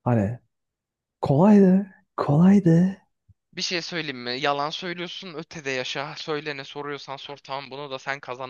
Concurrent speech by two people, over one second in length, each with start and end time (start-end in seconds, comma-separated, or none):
none